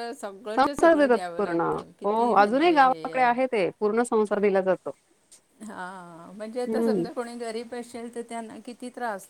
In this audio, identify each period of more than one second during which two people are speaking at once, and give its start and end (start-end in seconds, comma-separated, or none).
0.6-3.3